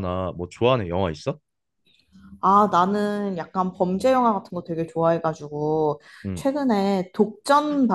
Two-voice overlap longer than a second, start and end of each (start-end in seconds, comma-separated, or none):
none